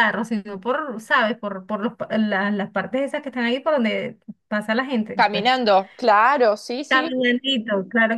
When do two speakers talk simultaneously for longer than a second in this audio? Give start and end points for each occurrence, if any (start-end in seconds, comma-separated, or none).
none